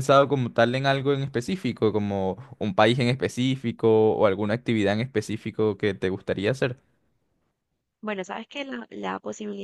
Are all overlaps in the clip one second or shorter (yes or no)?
yes